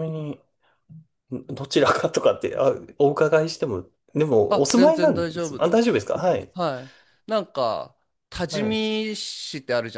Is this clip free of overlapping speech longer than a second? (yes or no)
no